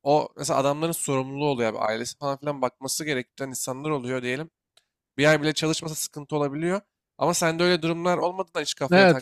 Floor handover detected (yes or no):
yes